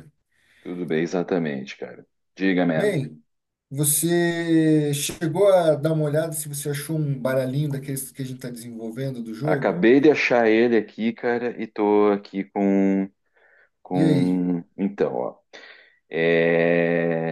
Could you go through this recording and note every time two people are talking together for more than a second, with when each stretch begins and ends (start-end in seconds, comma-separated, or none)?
none